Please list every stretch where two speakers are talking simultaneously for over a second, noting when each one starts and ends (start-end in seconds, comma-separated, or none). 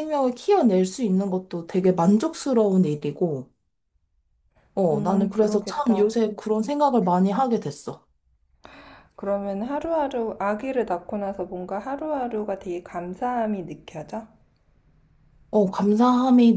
4.9-6.2